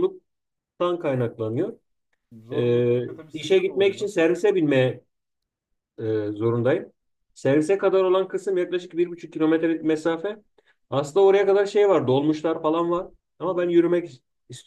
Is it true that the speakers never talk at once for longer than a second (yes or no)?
no